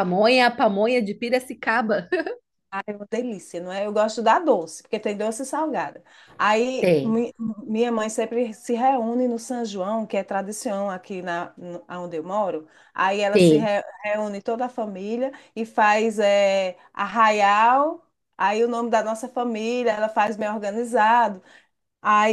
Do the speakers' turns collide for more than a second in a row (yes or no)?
no